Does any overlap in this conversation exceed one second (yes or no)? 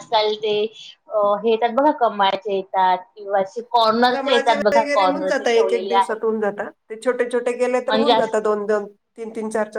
yes